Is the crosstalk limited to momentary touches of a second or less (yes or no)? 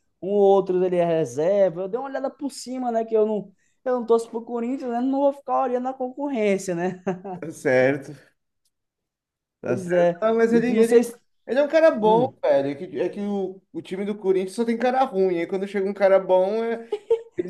no